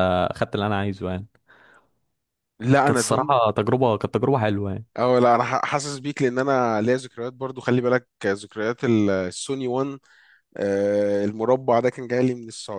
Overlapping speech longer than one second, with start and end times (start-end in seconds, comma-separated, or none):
none